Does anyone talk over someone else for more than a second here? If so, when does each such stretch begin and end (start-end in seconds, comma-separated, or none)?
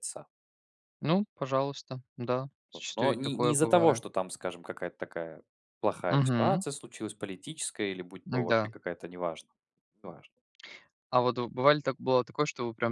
2.7-4.0